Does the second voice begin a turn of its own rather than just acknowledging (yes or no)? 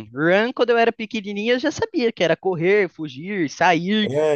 no